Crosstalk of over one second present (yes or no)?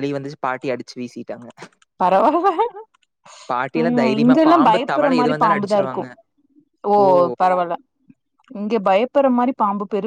yes